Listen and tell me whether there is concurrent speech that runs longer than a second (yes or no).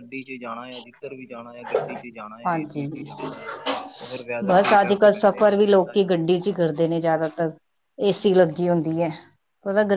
yes